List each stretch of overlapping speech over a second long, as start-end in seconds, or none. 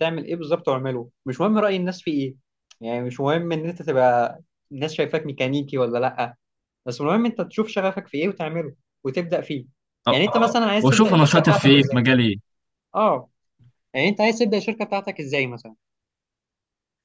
10.8-12.1